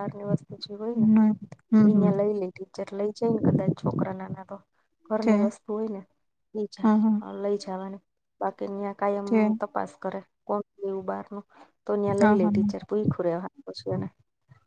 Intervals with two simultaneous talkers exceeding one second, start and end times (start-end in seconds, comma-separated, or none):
none